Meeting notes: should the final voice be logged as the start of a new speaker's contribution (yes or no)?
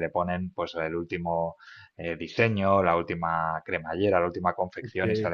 no